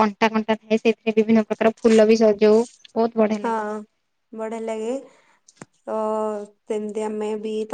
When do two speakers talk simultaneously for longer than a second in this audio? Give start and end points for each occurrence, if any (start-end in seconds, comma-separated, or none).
none